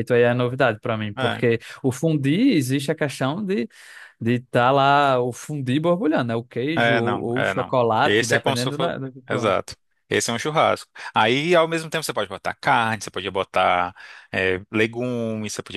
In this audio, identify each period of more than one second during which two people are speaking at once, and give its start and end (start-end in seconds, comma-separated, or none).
6.8-9.5